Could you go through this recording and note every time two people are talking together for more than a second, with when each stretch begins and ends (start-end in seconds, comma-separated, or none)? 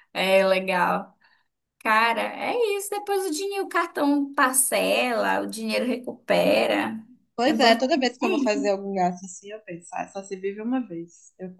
7.4-8.8